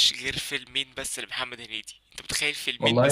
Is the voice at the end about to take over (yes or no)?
no